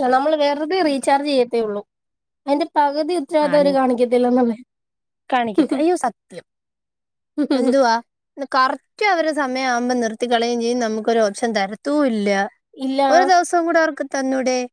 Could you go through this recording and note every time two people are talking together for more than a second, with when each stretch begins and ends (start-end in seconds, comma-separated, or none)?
none